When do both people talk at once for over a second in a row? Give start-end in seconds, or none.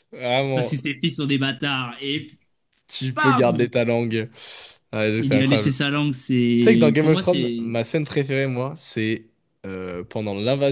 6.5-7.7